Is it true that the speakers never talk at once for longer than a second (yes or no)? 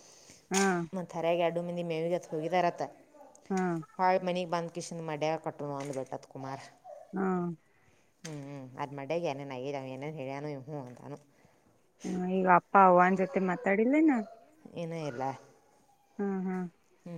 yes